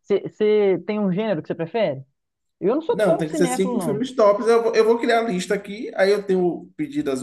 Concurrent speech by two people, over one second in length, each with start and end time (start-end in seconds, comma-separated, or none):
2.9-4.1